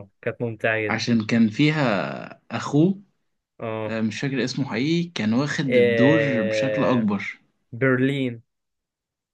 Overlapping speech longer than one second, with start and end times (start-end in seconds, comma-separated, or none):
5.7-7.1